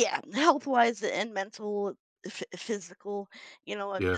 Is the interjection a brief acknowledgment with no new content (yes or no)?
yes